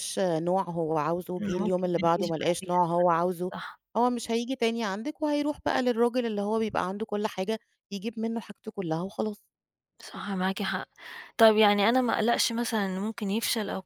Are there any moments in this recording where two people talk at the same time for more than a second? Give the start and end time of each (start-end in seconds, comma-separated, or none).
1.4-2.8